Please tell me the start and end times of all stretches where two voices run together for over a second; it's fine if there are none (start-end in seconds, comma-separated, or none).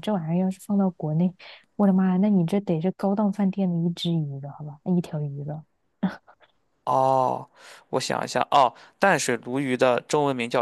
none